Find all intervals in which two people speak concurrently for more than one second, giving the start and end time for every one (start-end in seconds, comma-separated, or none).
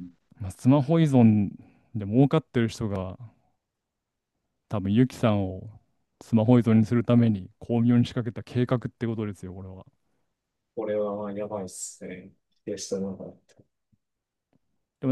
none